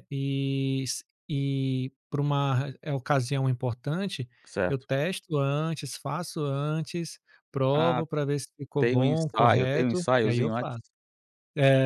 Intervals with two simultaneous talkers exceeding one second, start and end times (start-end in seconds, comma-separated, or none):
8.8-10.8